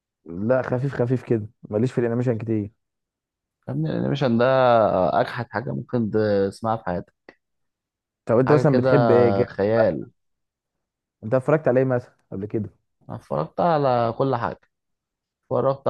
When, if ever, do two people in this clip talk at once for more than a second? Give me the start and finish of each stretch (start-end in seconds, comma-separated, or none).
none